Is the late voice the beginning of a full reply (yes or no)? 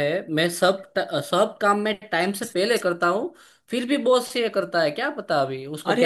yes